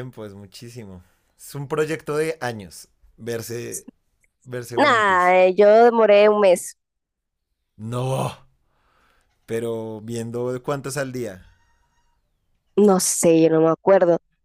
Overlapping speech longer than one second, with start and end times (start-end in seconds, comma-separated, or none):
none